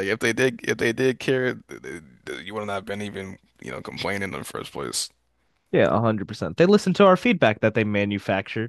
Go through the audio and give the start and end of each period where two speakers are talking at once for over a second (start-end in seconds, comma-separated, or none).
none